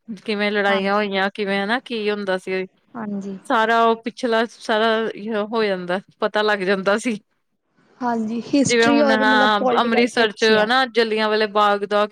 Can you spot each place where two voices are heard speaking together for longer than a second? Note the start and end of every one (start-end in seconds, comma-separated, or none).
8.7-10.7